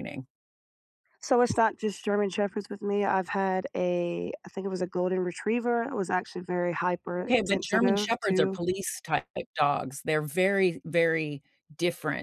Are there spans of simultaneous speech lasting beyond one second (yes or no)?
yes